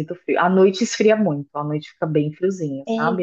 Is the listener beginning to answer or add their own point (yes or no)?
no